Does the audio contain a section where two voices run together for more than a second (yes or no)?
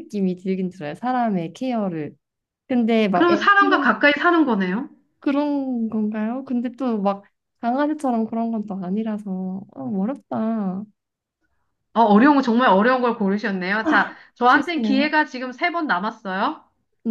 yes